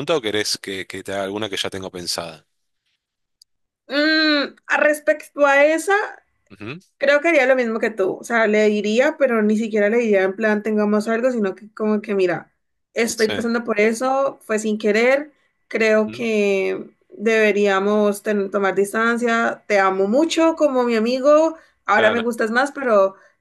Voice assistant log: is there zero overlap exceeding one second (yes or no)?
yes